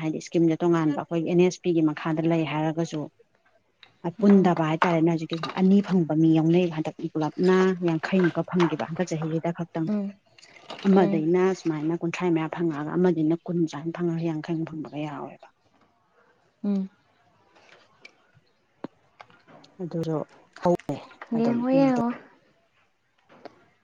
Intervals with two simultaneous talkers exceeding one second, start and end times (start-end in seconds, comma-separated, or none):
none